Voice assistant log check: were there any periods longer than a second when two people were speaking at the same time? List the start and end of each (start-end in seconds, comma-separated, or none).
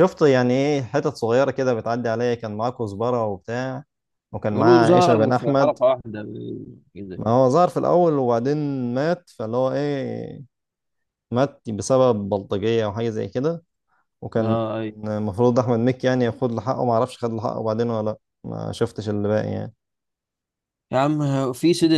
4.5-5.8